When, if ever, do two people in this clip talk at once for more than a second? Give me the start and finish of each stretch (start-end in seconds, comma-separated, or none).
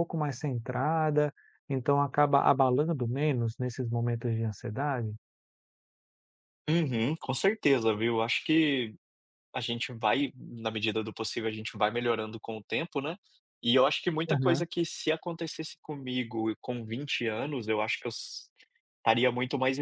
none